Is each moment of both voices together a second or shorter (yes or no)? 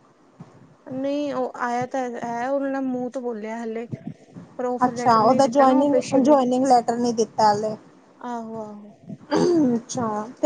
no